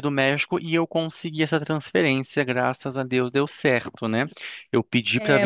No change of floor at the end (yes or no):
no